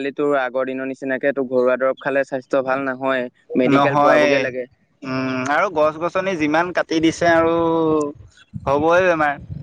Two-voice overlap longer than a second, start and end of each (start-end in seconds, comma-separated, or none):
none